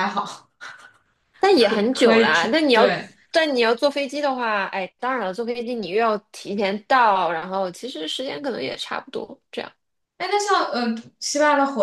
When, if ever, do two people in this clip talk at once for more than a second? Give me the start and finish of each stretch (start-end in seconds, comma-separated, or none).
1.6-2.9